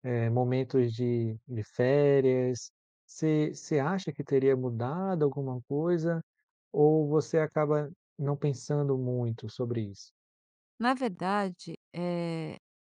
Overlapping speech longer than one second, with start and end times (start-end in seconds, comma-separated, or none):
none